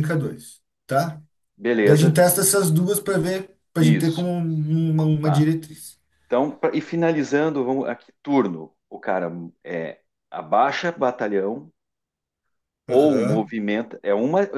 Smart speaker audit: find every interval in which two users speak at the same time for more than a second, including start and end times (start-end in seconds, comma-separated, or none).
none